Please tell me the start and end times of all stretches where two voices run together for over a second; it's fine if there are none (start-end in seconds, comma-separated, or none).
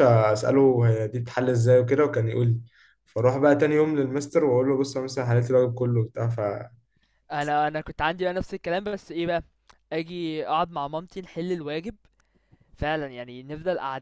none